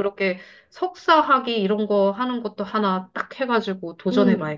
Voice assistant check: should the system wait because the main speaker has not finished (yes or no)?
no